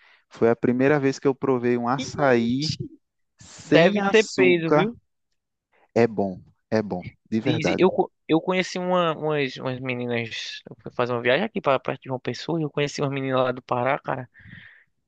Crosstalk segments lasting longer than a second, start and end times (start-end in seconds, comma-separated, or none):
3.6-4.9